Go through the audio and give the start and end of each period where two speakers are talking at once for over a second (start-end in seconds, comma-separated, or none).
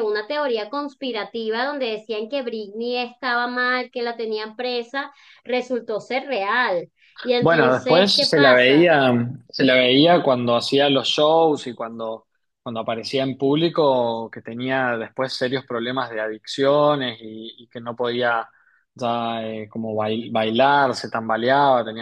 7.4-8.8